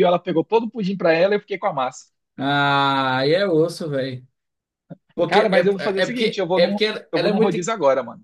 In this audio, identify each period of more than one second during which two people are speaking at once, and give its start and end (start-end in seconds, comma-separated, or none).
5.3-7.6